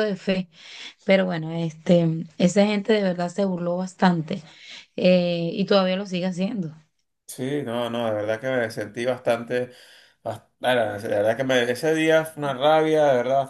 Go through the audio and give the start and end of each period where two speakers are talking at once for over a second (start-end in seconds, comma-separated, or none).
none